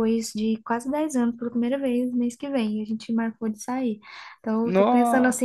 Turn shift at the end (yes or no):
no